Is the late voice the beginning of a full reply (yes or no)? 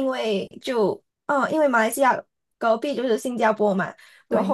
no